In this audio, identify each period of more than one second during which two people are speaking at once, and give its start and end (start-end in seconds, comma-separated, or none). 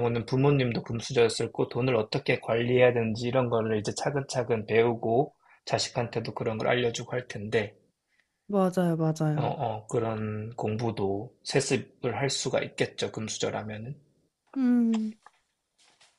none